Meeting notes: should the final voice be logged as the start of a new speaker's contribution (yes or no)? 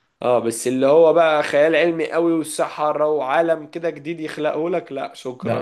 yes